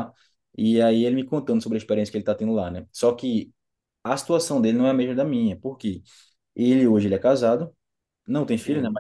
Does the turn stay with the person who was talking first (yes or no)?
yes